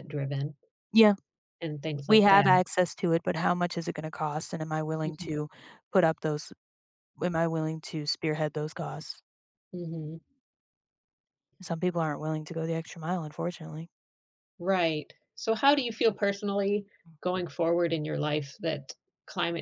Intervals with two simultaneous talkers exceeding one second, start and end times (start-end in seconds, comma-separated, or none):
none